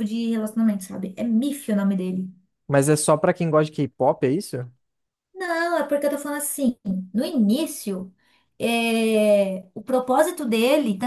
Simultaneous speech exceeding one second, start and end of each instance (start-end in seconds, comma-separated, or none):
none